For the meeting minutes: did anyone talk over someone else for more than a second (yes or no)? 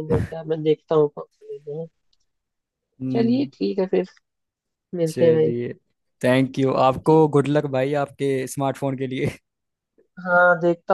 no